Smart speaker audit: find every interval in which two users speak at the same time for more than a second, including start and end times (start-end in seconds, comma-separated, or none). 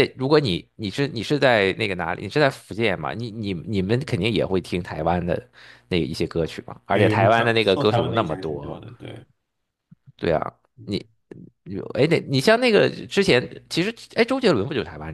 6.9-8.8